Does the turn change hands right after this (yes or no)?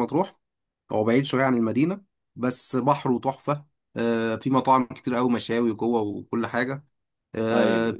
no